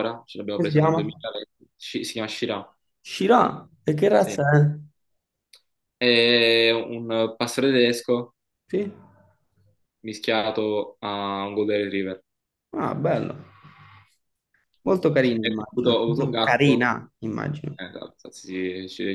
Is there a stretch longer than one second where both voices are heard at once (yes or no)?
yes